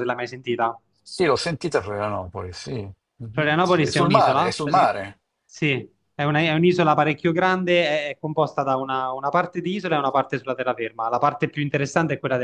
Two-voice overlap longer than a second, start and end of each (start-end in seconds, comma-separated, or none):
3.3-4.9